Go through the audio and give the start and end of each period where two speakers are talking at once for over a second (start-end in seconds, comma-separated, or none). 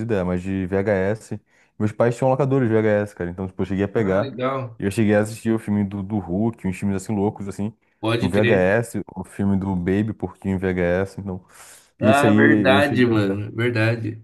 12.0-13.4